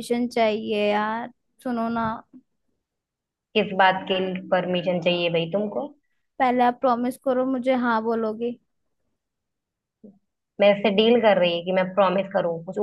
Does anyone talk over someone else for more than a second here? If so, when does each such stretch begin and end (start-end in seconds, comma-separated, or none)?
none